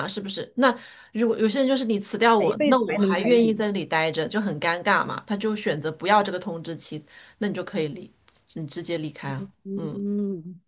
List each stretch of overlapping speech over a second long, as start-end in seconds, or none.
2.4-3.7